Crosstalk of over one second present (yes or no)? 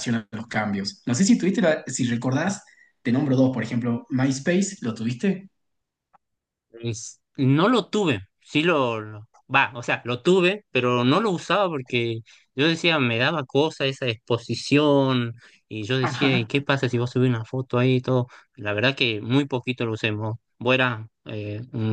no